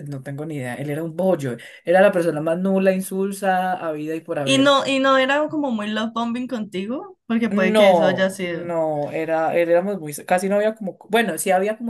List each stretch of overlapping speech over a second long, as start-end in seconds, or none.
7.5-8.7